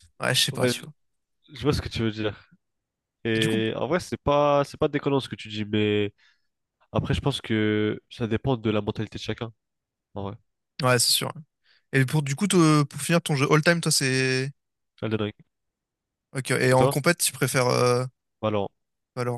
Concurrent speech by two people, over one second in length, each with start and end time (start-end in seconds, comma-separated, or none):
none